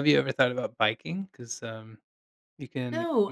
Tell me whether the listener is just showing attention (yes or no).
no